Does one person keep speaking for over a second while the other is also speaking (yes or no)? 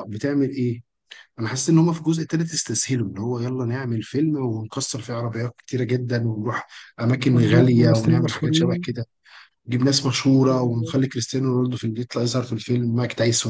yes